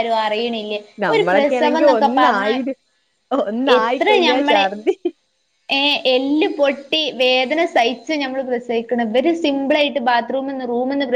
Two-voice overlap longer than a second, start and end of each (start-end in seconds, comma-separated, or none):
1.0-2.6